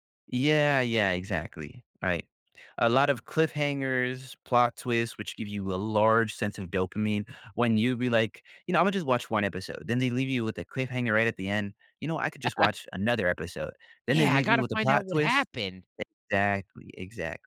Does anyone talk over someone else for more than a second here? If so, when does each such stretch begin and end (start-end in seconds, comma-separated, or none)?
14.1-15.5